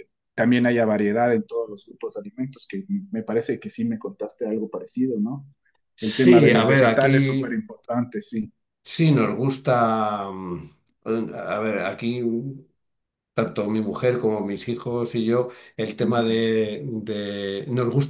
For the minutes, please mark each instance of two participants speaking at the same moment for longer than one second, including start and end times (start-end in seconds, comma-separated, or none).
6.0-7.6